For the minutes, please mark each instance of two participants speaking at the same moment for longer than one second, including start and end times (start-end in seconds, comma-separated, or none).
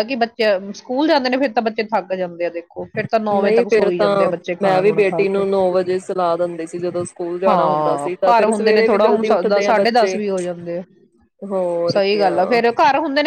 3.3-5.4, 7.5-10.2